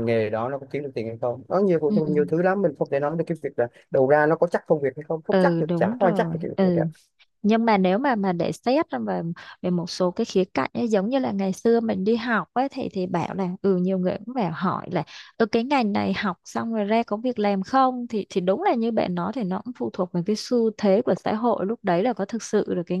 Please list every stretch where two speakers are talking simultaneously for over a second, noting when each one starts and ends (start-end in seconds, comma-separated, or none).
5.3-6.8